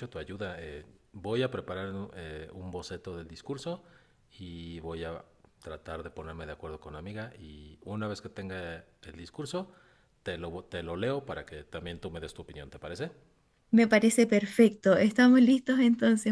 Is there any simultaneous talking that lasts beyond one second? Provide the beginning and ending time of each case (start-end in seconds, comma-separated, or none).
none